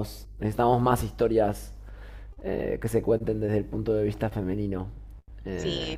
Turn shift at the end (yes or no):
yes